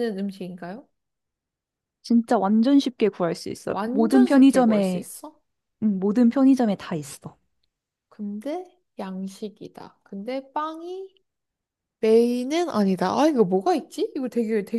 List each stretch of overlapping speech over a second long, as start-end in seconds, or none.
3.7-5.1